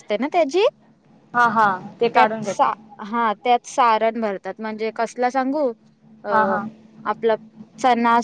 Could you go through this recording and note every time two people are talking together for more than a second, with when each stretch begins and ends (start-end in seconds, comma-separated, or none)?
none